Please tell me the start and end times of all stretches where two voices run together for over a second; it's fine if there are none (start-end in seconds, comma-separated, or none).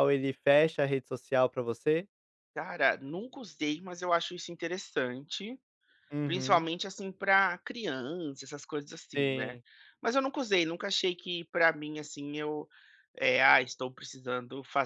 none